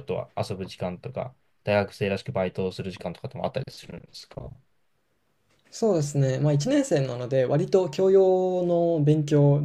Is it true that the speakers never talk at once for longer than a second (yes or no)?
yes